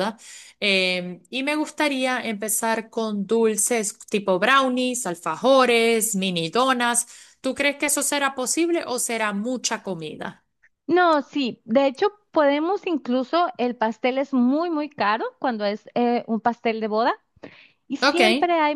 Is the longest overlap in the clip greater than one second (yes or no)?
no